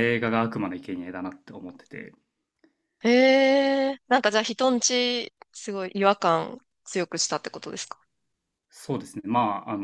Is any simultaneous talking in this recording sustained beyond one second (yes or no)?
no